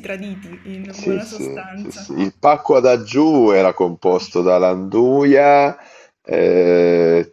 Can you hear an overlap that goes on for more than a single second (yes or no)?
yes